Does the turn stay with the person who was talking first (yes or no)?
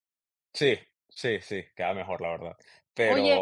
no